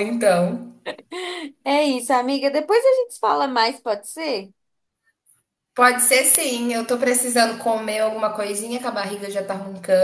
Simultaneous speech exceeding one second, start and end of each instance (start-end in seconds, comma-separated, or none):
none